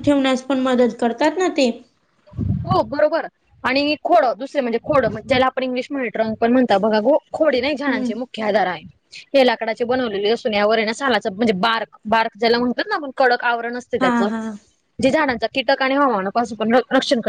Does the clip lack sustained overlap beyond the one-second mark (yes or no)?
yes